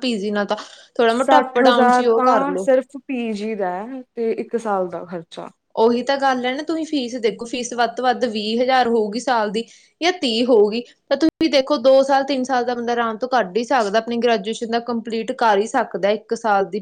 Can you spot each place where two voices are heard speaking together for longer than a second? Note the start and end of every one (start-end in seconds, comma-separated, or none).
1.1-2.7